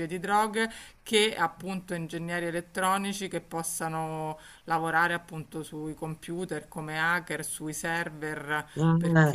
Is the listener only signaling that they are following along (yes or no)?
yes